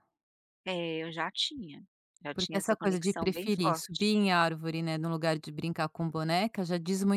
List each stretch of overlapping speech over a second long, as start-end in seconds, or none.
2.3-4.1